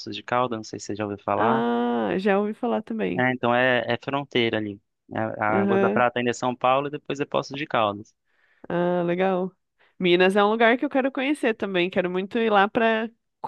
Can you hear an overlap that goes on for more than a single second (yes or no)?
no